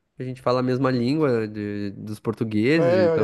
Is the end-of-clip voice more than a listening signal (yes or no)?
yes